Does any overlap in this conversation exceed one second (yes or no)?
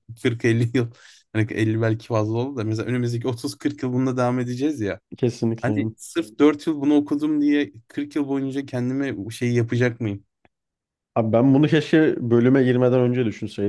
no